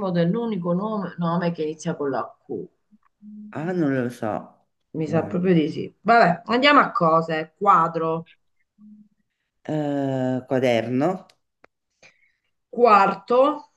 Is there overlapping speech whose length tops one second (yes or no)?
no